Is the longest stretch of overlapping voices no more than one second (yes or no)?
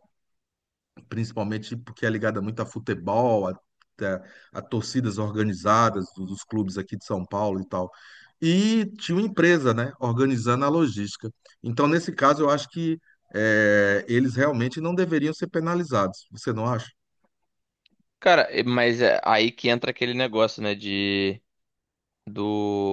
yes